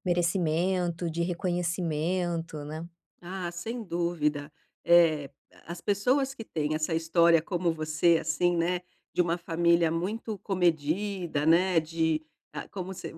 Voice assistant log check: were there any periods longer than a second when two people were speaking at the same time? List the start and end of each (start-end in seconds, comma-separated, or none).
none